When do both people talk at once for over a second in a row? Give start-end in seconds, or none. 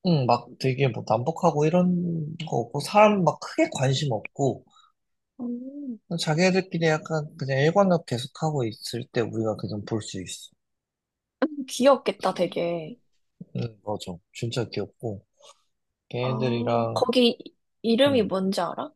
none